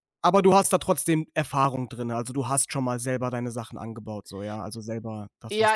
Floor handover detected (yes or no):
yes